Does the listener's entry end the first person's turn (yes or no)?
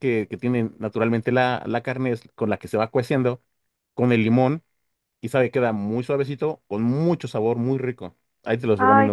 yes